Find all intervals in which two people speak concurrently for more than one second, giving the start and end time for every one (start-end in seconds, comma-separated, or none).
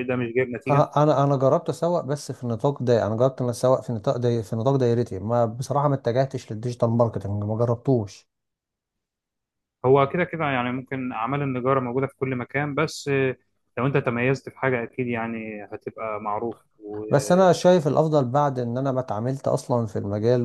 none